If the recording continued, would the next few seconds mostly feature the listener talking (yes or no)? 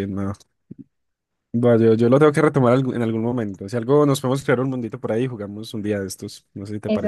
yes